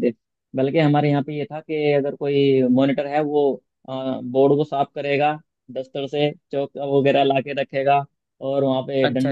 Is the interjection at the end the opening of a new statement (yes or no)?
no